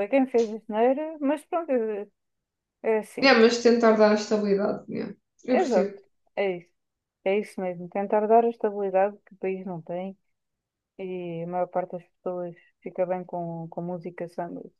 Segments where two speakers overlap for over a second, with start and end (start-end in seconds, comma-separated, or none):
none